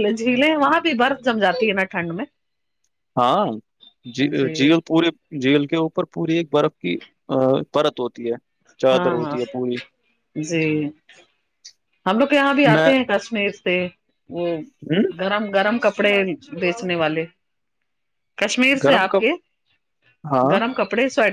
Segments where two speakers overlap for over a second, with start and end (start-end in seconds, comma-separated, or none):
none